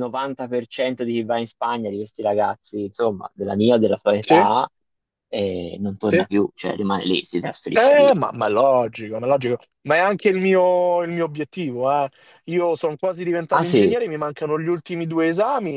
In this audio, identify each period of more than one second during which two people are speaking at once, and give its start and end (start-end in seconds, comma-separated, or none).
none